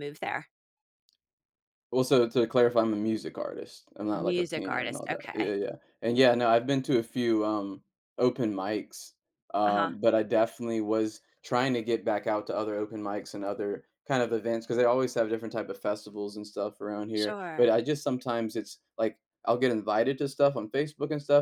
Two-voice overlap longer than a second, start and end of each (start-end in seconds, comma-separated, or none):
4.1-5.5